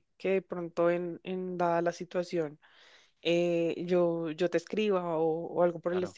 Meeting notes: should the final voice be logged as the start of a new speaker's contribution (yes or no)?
yes